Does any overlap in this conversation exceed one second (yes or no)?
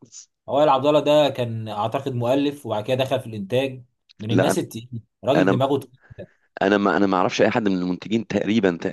no